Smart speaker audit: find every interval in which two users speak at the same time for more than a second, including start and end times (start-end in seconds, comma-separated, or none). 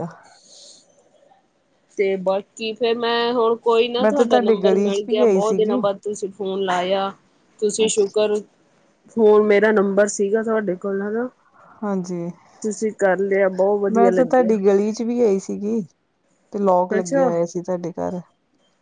4.0-5.8